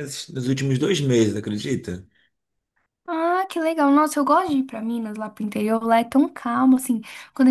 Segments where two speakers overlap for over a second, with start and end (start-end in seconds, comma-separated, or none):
none